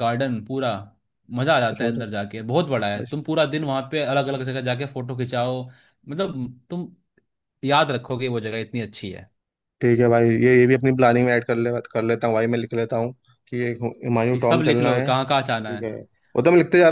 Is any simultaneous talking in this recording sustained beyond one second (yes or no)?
yes